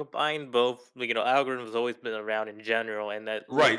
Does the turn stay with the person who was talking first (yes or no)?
no